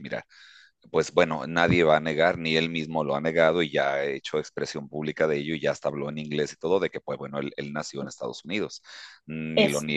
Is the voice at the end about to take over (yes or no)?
no